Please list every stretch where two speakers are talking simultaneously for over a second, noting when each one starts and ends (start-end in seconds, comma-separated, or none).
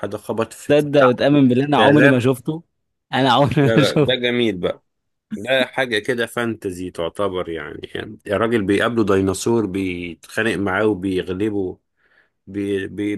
none